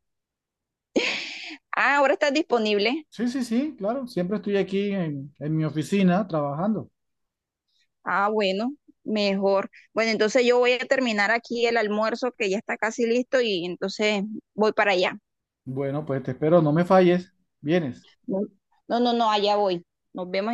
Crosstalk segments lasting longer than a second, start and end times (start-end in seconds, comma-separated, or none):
none